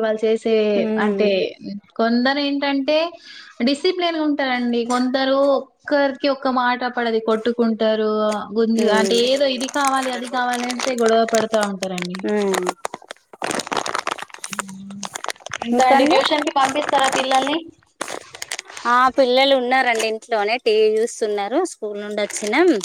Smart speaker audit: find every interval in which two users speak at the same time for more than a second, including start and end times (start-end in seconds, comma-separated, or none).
none